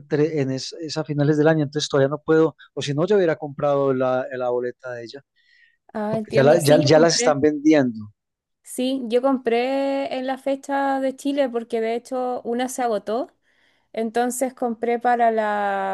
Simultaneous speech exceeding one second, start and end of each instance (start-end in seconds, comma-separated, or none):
6.1-7.4